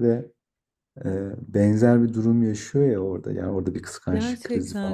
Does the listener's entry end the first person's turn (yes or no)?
yes